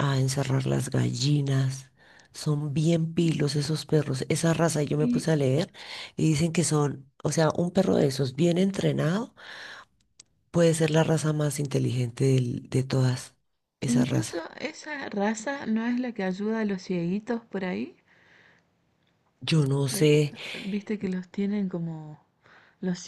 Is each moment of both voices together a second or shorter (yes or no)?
yes